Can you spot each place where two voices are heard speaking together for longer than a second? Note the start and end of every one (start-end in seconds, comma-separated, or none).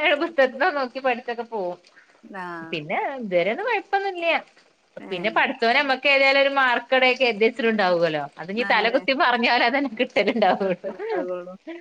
none